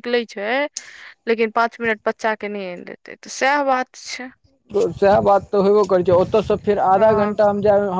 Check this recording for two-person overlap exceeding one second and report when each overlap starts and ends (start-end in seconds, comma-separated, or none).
none